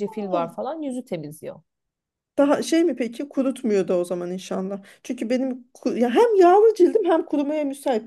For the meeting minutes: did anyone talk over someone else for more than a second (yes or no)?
no